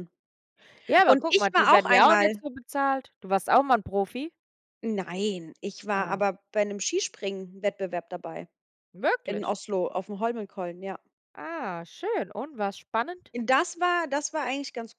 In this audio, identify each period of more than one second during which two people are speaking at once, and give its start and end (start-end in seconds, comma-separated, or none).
1.0-2.4